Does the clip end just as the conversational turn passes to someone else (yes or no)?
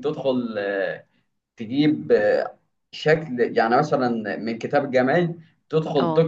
no